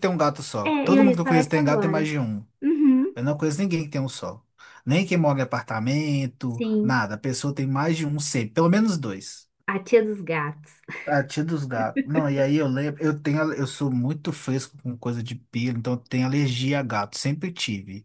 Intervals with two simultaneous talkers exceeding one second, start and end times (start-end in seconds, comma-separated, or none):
0.6-2.1